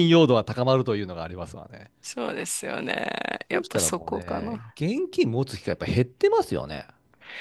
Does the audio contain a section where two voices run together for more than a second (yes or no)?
yes